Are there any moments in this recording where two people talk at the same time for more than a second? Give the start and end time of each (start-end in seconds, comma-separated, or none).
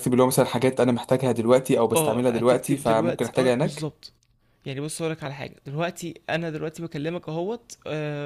1.9-3.9